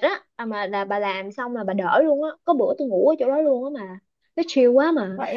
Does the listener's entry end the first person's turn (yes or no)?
no